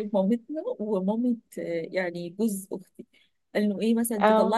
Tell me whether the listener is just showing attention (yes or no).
yes